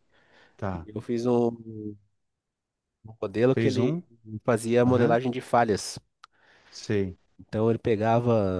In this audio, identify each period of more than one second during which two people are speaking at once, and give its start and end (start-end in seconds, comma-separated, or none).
none